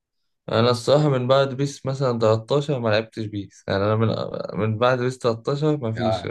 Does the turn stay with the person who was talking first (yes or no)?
no